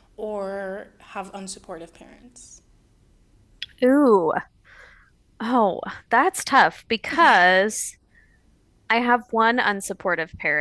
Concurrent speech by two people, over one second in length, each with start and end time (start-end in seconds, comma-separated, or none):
none